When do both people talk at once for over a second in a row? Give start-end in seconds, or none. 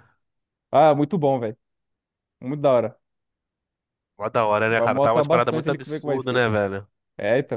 4.7-6.5